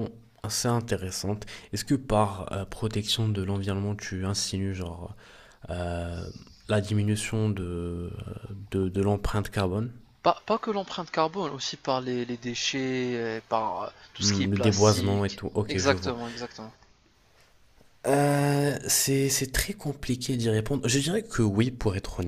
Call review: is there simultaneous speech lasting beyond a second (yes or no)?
yes